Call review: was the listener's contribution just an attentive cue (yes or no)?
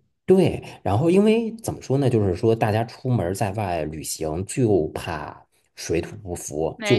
yes